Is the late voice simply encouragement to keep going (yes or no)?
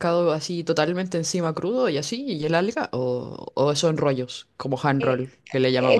no